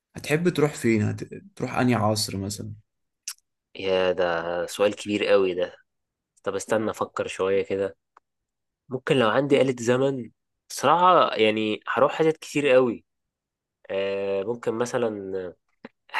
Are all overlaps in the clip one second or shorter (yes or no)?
yes